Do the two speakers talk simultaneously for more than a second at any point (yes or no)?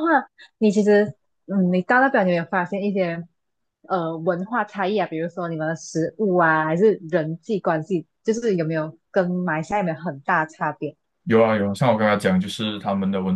no